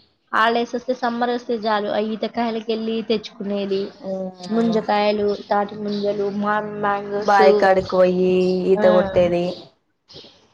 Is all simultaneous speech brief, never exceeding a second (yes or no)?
yes